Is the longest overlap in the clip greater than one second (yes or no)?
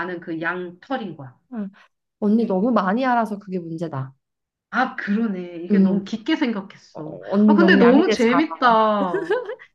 yes